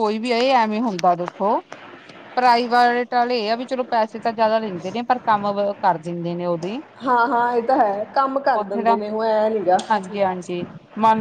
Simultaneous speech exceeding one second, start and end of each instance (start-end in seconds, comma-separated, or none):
none